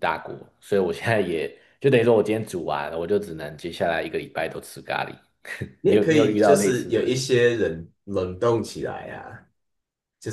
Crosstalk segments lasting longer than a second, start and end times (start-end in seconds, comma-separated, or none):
5.8-7.2